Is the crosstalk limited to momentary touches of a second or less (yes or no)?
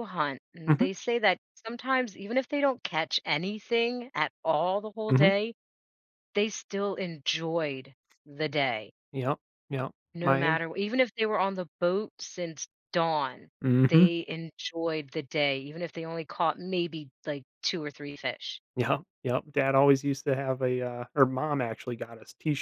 yes